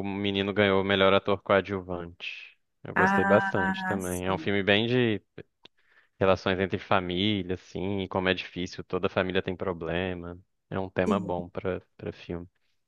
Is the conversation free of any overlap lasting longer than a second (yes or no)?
no